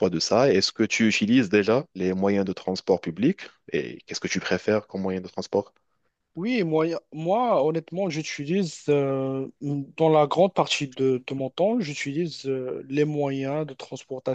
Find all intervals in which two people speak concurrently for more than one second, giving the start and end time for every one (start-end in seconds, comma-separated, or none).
none